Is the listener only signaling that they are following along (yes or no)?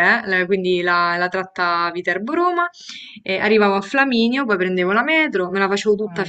yes